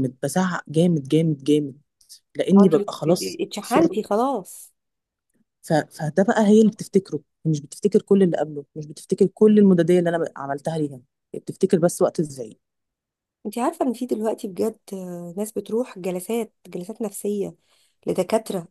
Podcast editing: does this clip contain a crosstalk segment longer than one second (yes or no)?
yes